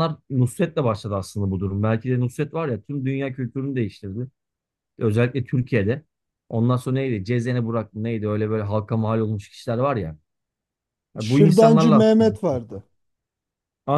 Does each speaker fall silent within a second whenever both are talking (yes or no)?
no